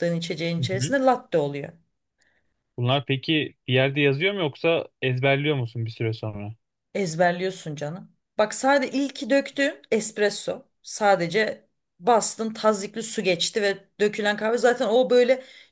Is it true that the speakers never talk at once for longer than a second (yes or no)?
yes